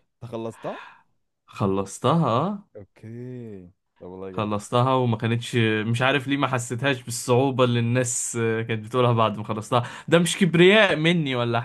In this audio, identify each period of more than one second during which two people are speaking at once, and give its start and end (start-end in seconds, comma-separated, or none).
none